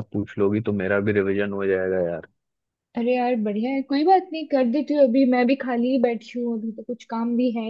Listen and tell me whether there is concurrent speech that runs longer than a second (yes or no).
no